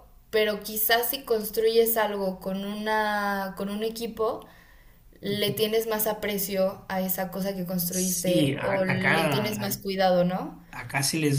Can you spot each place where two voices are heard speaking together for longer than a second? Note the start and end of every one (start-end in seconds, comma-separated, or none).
7.9-9.8